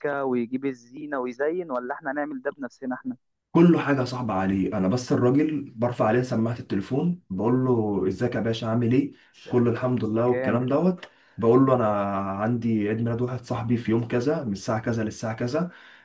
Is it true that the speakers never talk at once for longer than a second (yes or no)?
yes